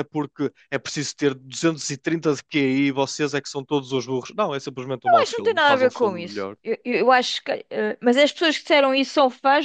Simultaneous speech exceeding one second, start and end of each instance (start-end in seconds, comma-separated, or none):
5.0-6.5